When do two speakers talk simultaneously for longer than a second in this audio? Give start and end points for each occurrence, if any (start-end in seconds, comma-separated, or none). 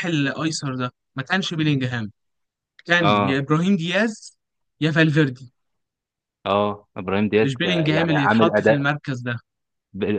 7.4-8.8